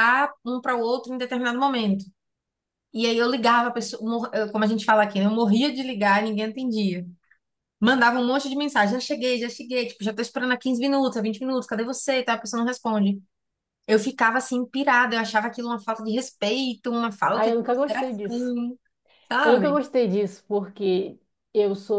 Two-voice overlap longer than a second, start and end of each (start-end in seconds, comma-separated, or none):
17.3-18.5